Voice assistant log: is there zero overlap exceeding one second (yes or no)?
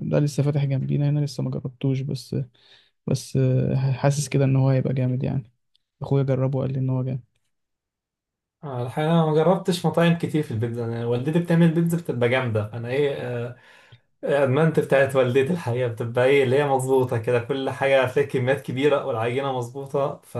yes